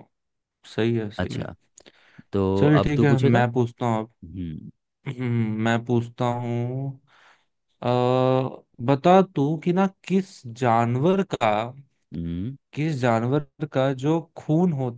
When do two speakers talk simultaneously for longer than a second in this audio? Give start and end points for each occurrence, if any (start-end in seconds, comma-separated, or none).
none